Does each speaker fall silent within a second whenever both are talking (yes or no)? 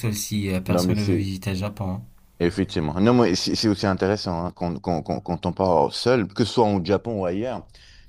yes